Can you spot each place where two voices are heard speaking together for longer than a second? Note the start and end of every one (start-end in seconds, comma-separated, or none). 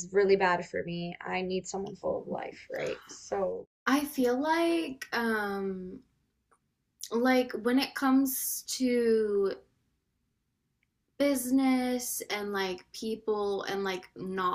none